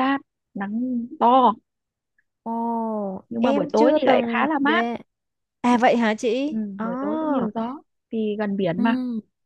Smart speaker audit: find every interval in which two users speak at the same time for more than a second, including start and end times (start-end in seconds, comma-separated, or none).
3.4-4.8